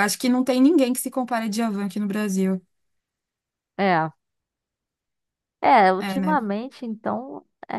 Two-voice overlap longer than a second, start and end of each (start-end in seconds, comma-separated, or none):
none